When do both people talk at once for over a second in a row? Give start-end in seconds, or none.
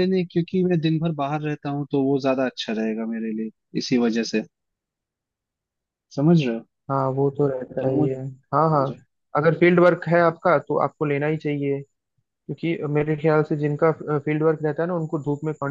none